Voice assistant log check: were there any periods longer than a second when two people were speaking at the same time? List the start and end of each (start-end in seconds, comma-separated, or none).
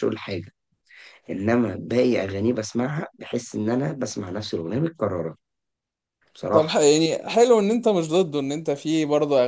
none